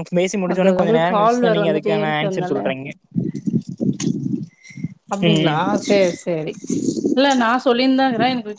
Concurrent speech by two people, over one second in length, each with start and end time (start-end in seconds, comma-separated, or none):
0.6-2.6